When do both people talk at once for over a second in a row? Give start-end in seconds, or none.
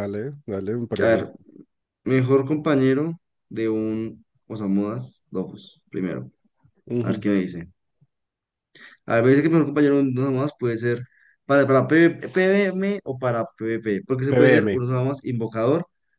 none